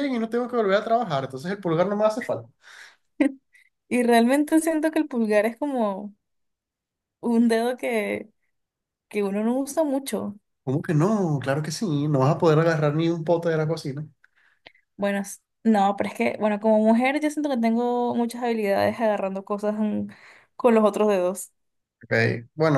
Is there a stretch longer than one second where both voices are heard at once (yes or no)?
no